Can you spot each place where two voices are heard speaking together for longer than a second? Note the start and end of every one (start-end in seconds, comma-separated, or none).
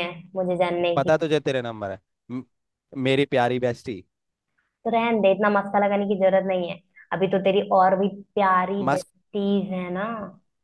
none